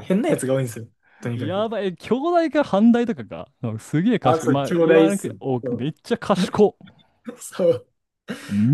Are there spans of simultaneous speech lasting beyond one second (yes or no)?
yes